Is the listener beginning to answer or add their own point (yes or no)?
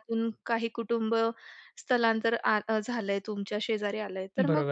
no